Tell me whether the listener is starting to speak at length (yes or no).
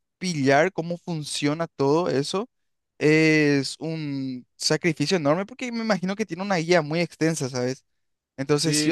yes